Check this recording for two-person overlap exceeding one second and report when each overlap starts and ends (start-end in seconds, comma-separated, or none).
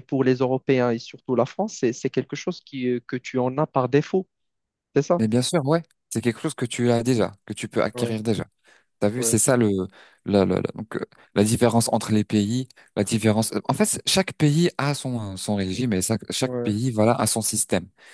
none